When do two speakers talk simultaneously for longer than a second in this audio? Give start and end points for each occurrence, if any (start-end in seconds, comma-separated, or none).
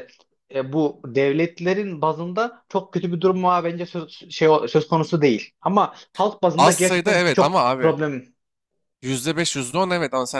6.6-8.0